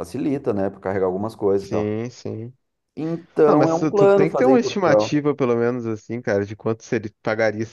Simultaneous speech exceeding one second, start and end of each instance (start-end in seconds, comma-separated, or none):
3.5-5.2